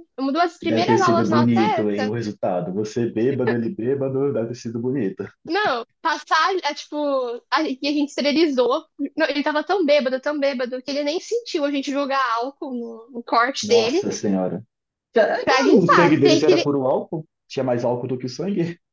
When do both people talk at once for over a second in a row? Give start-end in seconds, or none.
0.6-1.9, 15.4-16.7